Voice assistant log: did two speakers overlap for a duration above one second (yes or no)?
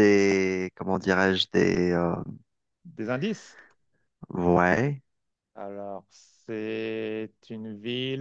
no